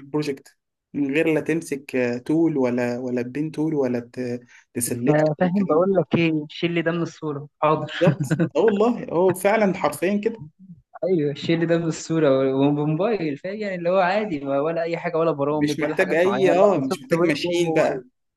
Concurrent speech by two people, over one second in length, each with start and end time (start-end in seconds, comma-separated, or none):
15.5-17.7